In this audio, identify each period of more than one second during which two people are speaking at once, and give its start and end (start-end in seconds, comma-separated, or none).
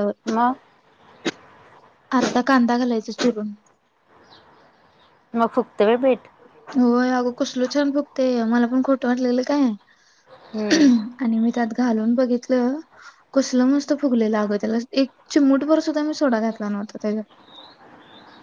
none